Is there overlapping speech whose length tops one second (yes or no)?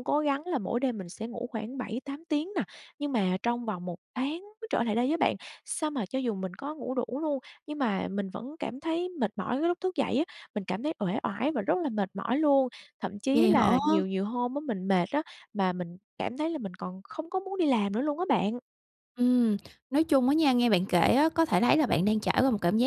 no